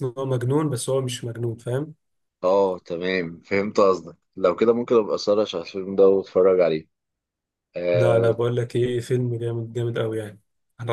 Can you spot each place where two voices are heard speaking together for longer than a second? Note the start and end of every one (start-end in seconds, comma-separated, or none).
none